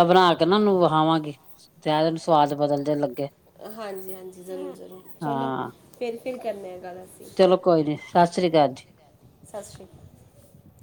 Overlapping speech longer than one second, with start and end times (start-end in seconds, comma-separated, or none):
none